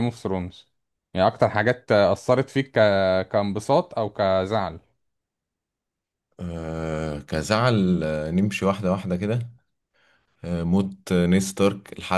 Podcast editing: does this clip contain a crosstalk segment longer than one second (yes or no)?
no